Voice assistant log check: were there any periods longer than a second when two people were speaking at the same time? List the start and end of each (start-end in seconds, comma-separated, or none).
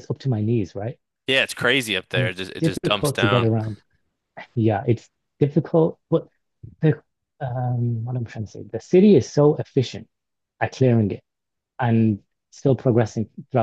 2.1-3.5